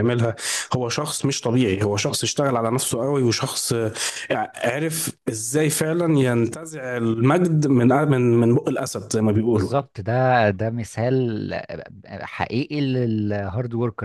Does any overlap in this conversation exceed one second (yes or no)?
no